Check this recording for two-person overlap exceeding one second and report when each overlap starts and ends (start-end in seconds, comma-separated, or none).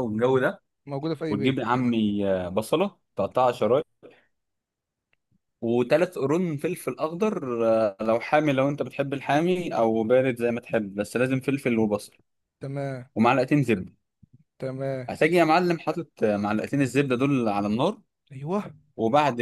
none